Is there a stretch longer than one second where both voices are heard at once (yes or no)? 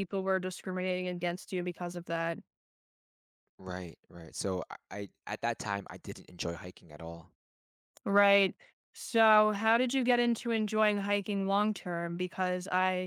no